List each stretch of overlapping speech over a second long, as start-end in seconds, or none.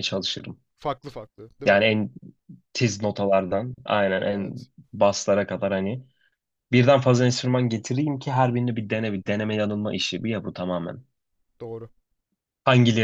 none